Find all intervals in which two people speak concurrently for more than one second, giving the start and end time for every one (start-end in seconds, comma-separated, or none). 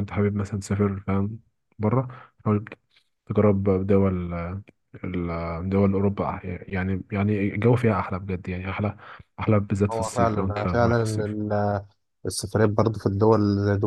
9.9-11.3